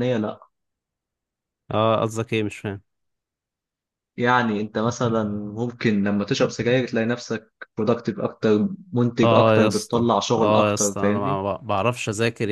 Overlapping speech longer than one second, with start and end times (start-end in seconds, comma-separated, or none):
9.2-11.4